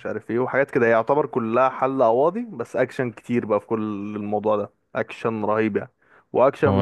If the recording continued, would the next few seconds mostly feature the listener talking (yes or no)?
no